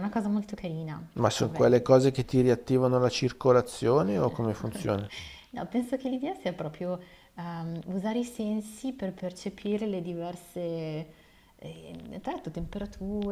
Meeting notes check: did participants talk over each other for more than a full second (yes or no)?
no